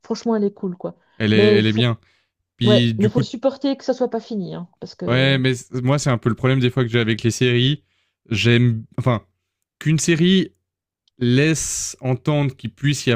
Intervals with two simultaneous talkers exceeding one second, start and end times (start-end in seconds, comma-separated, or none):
none